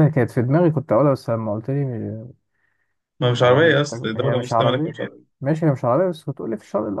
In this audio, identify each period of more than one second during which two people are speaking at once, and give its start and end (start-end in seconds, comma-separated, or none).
3.4-4.9